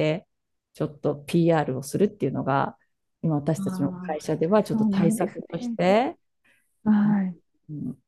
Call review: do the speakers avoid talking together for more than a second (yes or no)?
no